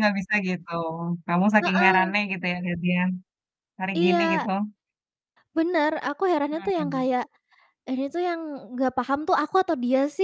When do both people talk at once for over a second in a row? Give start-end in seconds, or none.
none